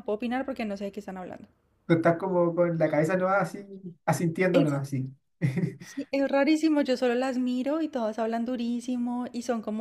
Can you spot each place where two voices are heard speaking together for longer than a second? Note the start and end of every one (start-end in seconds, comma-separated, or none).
none